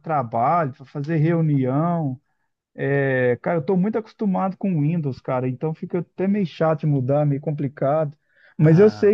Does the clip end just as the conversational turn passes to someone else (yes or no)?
no